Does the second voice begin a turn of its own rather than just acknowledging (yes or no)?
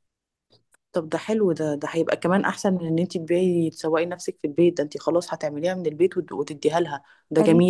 no